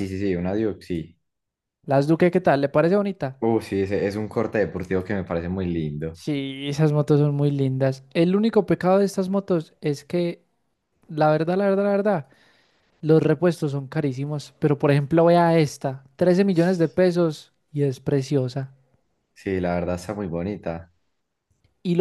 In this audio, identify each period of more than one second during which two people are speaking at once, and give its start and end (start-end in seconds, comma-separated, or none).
none